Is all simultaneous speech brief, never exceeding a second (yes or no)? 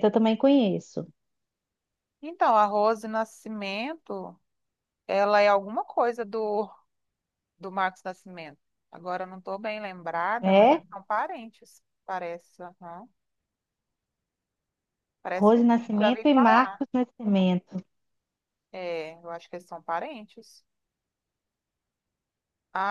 no